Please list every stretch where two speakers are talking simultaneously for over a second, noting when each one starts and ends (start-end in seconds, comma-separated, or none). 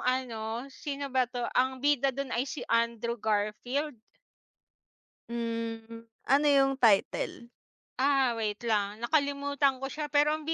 none